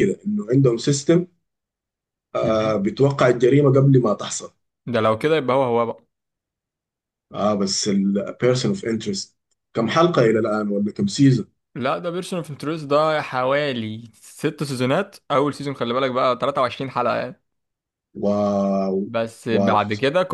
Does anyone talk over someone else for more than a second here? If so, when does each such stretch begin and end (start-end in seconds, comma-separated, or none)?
none